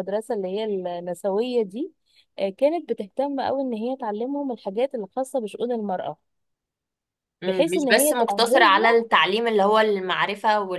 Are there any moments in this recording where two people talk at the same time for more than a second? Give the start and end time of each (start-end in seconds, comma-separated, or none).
7.5-9.0